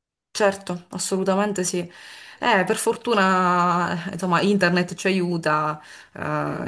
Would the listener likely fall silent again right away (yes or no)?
yes